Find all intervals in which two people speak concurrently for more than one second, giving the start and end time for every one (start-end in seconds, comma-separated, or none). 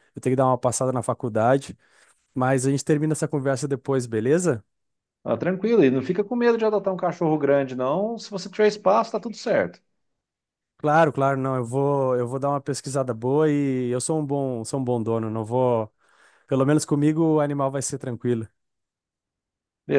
none